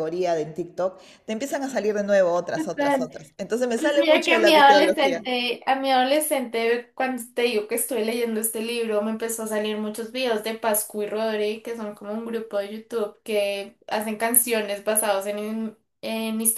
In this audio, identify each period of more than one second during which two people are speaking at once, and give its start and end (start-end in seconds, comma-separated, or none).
3.7-5.2